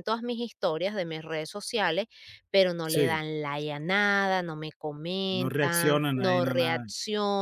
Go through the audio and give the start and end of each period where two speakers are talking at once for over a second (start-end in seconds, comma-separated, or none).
5.3-6.8